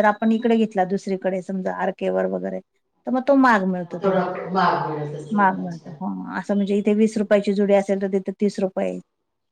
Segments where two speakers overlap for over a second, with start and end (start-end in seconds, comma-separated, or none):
none